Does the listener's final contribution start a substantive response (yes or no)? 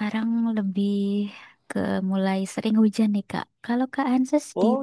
yes